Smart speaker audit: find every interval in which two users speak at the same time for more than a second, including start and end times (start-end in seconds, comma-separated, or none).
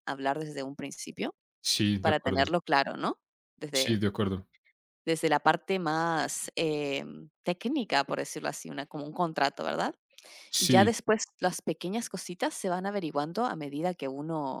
none